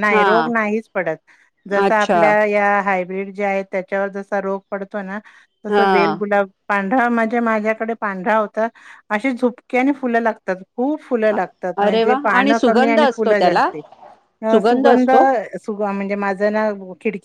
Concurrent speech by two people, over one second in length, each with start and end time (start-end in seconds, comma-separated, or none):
11.9-13.7